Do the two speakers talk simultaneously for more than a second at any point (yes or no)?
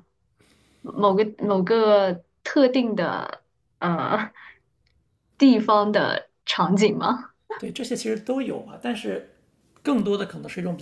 no